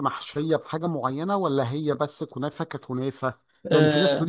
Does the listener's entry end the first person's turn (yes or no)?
no